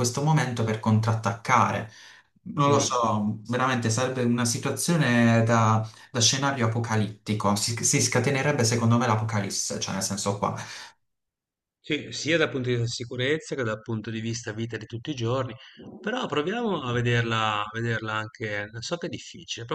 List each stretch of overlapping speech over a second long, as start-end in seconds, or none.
none